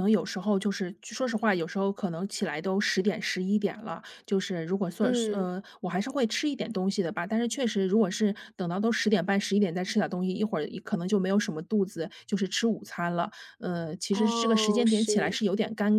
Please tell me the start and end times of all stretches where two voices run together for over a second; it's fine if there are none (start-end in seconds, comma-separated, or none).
14.1-15.4